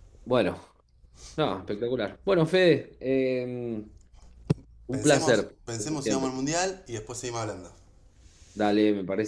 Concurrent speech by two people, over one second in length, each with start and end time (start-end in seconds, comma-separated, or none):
4.9-6.3